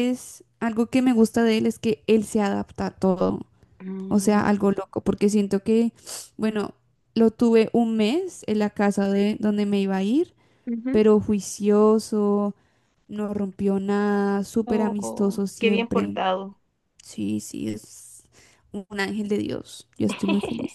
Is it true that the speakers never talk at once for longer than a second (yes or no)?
no